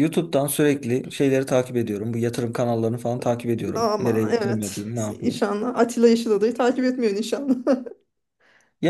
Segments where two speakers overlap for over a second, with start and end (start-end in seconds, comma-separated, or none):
3.8-5.4